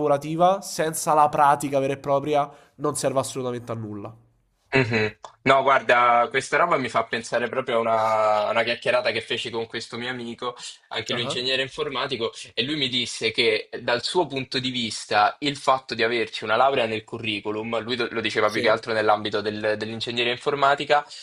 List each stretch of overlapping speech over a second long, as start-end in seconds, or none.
none